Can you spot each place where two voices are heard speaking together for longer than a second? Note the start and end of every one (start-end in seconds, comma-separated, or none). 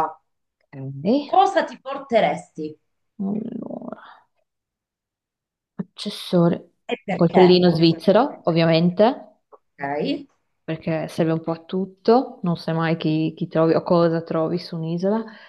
6.9-8.8